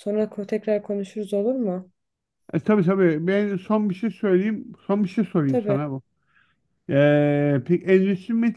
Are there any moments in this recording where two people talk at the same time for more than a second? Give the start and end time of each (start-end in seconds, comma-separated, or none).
none